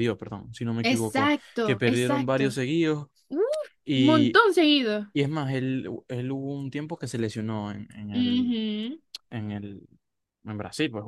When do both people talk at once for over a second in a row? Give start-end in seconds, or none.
0.8-2.5